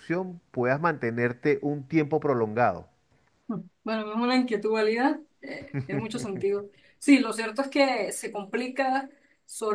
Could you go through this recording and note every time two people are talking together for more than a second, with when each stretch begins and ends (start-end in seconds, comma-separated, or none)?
none